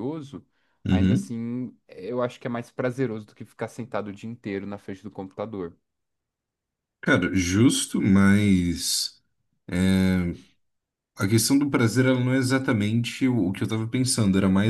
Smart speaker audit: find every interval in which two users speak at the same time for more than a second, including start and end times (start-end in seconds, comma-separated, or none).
none